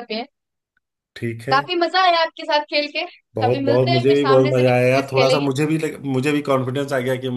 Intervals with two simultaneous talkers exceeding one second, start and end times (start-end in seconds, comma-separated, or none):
3.4-5.5